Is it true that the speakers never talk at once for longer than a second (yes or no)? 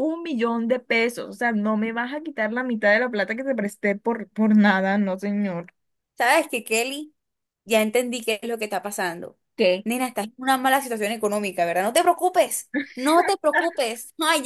yes